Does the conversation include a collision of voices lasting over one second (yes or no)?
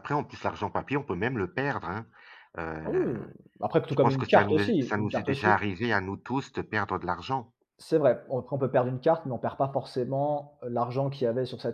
yes